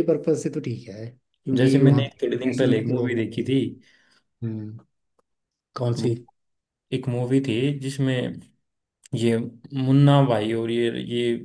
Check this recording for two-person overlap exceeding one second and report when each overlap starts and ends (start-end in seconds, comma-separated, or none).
1.6-3.5